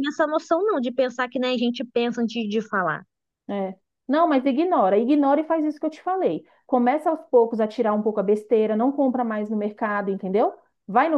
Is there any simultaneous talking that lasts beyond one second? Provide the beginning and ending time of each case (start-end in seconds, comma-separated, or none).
none